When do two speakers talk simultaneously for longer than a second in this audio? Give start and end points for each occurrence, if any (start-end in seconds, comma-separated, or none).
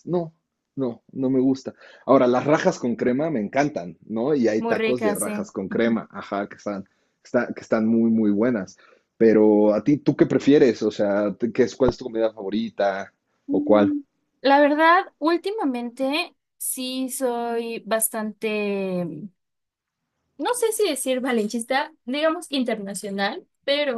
4.6-6.0